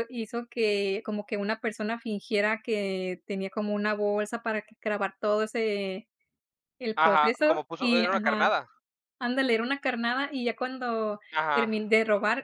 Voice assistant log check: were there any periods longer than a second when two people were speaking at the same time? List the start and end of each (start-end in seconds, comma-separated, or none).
7.0-8.5